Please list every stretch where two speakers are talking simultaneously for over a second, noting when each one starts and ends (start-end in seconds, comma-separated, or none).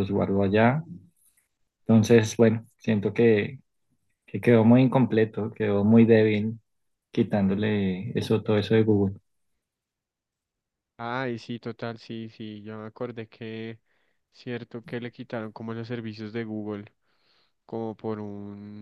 none